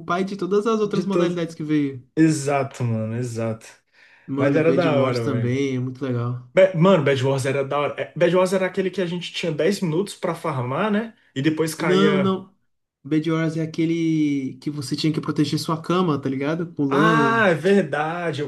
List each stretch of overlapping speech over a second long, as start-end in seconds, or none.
4.4-5.6